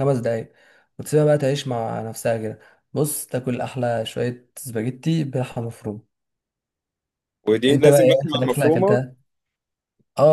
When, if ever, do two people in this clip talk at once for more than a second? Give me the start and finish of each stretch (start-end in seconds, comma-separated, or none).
7.7-9.0